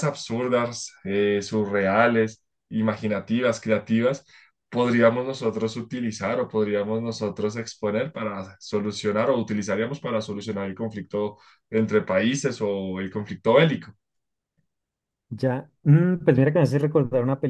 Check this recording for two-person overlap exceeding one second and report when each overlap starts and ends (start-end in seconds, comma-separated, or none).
none